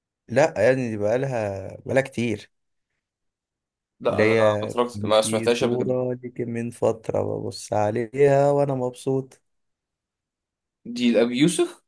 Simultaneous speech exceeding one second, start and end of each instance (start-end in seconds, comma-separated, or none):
4.1-6.0